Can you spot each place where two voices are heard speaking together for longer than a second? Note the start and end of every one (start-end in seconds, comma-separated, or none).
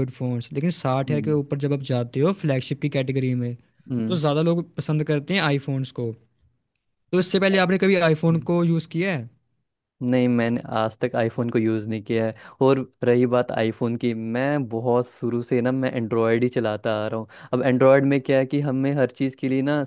none